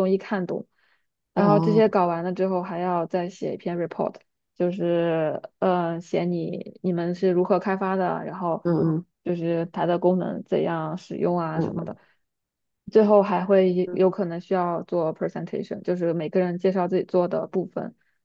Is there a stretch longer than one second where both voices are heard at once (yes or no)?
no